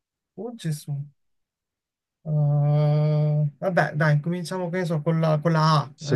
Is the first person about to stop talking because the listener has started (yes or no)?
yes